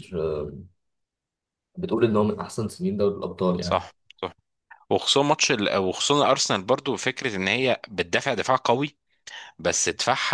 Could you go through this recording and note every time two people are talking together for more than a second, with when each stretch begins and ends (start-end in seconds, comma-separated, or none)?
none